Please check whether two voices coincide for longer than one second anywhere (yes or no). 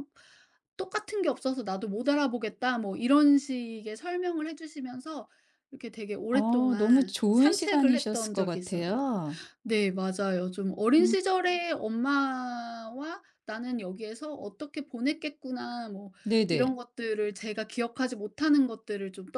yes